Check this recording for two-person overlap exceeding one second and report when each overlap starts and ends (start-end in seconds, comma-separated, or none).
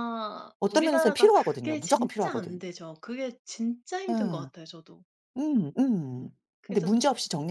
0.6-2.6